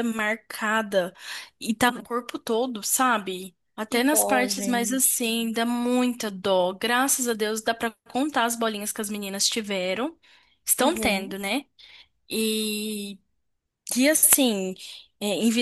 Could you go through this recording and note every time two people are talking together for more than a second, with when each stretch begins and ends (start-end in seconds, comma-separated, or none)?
3.9-5.3